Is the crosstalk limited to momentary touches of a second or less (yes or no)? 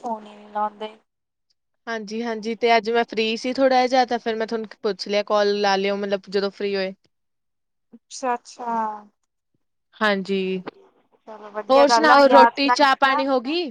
no